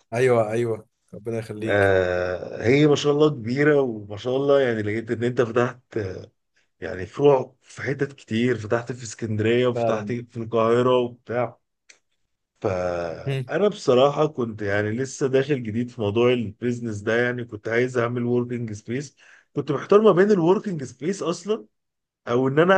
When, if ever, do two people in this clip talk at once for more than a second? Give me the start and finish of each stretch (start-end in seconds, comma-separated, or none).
none